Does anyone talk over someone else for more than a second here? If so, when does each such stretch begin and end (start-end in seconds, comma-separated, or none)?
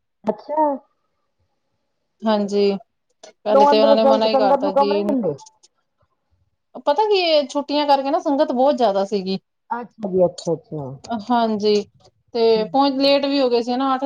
3.3-4.9